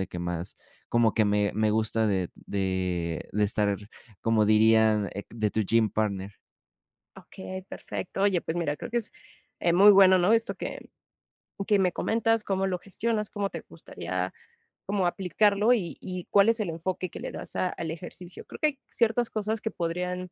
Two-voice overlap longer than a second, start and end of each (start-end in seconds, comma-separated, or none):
none